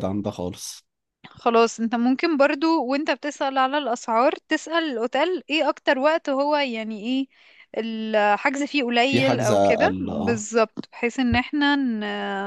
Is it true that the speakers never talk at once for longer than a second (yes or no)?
no